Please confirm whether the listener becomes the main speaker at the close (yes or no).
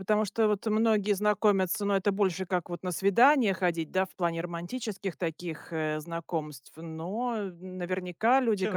yes